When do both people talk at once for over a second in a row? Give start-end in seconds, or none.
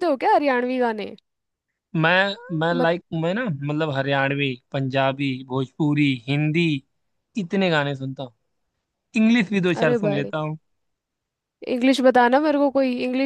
none